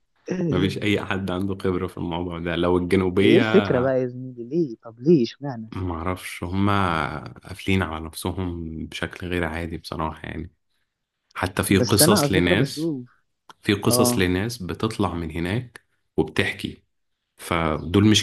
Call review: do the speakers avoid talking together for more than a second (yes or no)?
no